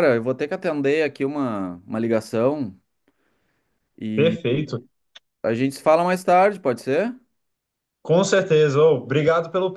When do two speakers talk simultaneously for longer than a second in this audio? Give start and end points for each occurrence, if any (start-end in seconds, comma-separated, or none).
none